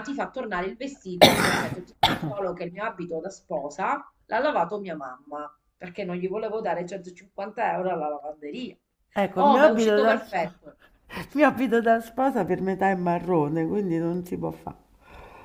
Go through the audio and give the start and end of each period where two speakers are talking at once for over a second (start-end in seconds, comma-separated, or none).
9.3-10.8